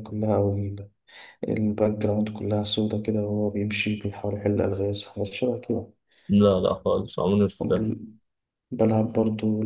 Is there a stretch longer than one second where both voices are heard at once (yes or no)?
no